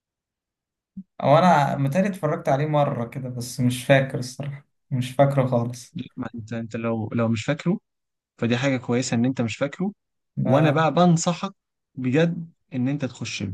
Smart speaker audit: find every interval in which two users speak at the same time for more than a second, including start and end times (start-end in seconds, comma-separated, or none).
none